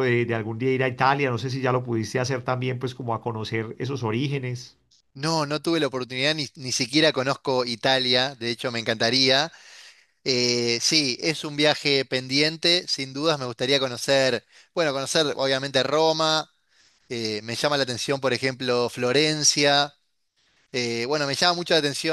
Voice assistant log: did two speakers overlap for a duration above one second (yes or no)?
no